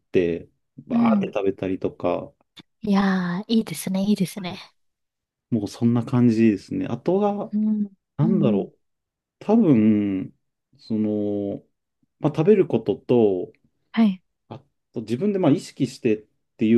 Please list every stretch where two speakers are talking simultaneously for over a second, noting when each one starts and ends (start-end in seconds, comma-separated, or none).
none